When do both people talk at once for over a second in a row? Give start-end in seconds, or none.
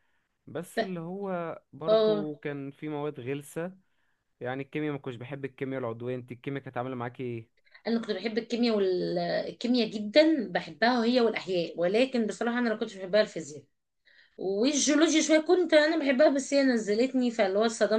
none